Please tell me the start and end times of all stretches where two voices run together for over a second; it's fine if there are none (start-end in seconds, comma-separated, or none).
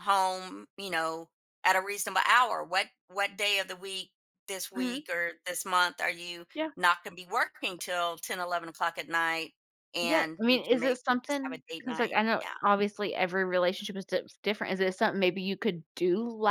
10.0-12.5